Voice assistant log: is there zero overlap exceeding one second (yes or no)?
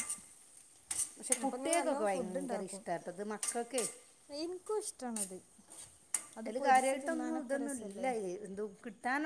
no